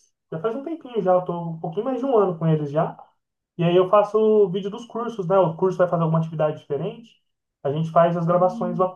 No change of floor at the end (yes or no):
yes